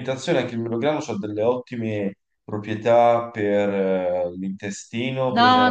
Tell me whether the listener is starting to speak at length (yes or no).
yes